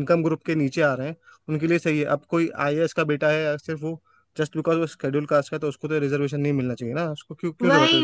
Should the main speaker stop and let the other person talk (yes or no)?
yes